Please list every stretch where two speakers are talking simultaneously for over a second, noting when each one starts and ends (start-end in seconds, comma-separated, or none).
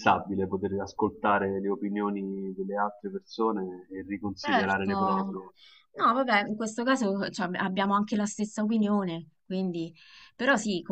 none